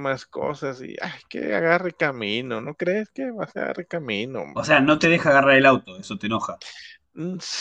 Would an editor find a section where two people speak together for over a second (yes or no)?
no